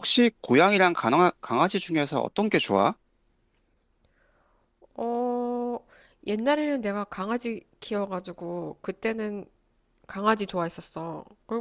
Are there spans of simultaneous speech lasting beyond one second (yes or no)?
no